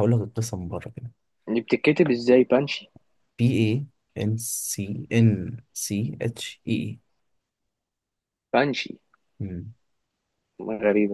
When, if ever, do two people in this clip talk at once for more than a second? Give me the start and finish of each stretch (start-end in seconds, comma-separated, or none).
none